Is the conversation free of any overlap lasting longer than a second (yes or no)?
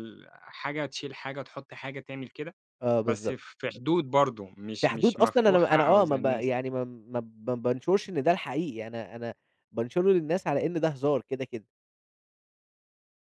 no